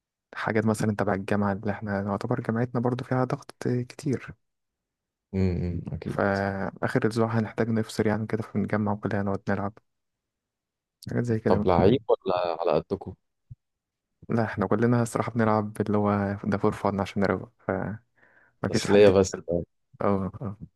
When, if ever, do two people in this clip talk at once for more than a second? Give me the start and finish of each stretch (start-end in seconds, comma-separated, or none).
none